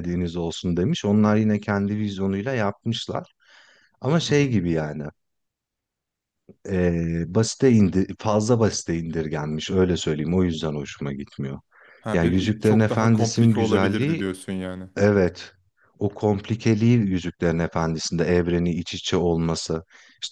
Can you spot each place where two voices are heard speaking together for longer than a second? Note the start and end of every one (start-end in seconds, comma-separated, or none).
12.1-14.2